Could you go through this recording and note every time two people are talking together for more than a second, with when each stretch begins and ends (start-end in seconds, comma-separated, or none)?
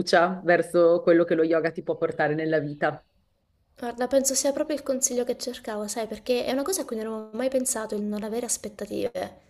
none